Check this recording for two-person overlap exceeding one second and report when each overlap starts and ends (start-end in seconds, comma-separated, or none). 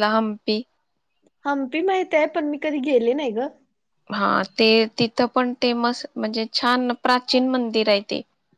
none